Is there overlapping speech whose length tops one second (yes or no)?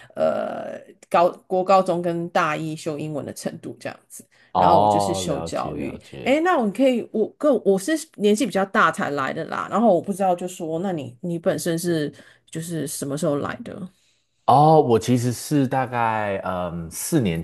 yes